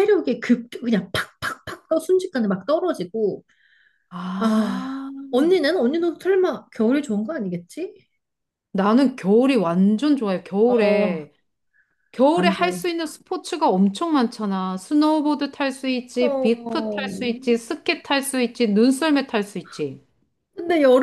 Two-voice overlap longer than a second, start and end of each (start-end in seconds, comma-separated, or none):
16.2-17.6